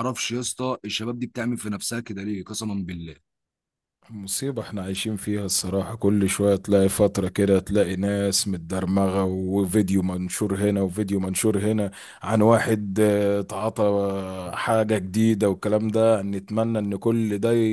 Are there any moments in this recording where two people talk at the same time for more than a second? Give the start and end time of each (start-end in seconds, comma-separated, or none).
none